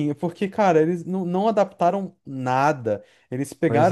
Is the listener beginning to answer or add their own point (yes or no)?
no